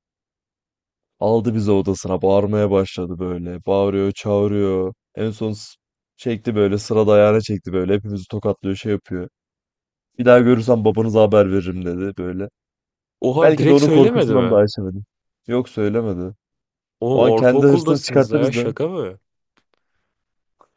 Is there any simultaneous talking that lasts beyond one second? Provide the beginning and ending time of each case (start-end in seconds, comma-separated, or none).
13.4-14.6, 17.1-18.7